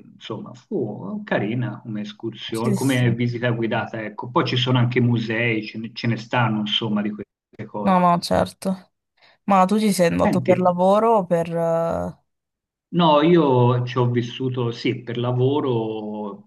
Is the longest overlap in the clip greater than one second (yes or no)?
no